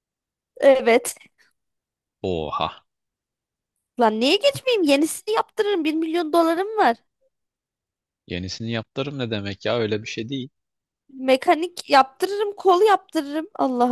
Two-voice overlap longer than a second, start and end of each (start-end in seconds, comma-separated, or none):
none